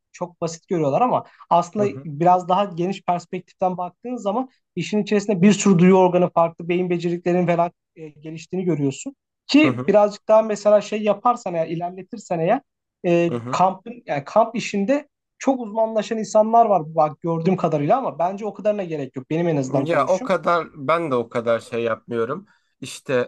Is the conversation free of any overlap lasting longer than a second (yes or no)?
yes